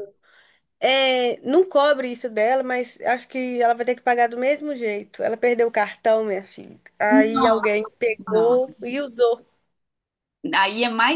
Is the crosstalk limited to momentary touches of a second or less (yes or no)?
no